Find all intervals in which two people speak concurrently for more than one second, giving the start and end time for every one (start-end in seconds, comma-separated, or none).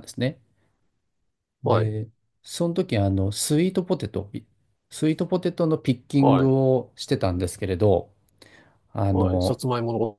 none